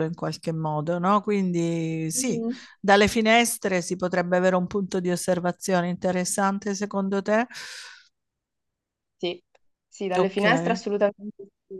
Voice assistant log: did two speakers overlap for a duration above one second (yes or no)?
no